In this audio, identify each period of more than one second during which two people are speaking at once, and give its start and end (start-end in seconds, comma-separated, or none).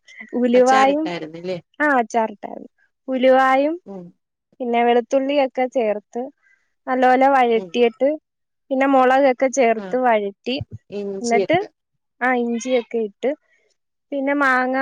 none